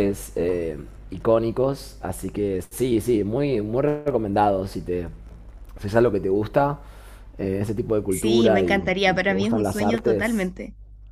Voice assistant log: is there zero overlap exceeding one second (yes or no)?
no